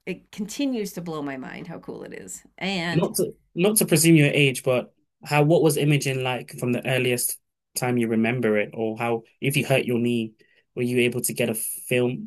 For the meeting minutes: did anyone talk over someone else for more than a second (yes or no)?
no